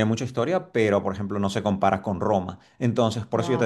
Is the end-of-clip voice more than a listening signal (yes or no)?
no